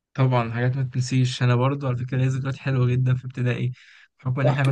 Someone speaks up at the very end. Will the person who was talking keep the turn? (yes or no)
yes